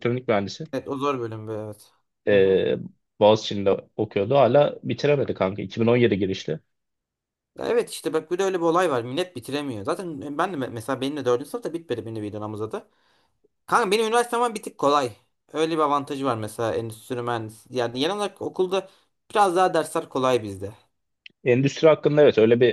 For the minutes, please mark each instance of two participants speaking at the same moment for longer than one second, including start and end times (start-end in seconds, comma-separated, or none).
none